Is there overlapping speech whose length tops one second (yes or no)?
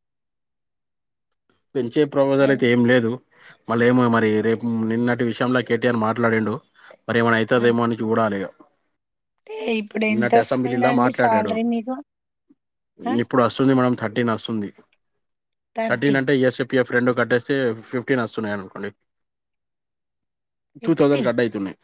yes